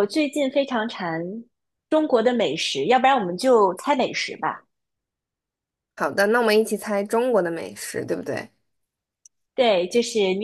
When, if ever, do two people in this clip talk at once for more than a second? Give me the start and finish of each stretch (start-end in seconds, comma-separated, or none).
none